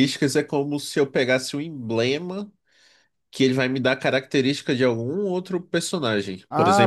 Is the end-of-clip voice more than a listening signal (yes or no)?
no